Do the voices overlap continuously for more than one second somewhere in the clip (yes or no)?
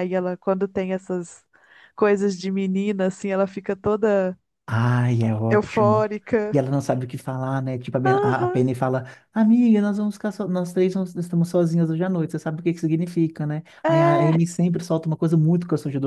no